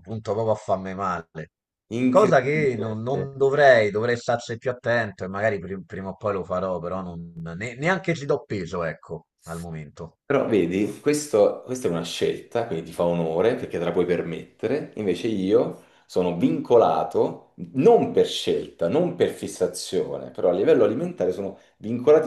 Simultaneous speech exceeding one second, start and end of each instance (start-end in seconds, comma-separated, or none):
2.1-3.3